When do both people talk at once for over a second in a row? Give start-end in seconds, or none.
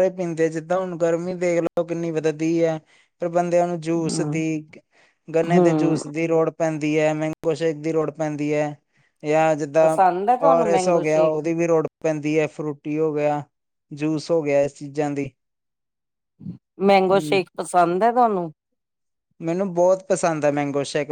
none